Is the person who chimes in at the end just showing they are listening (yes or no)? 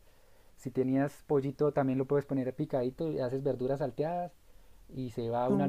yes